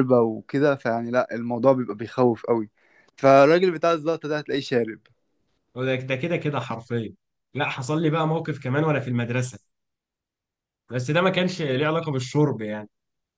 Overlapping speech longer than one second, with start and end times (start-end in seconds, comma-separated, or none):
none